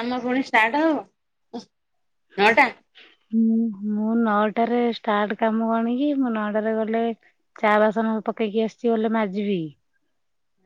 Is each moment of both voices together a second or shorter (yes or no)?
yes